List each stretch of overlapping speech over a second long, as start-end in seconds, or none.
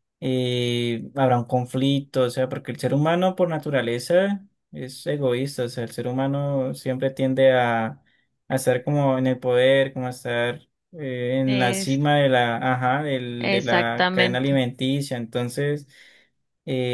13.4-14.6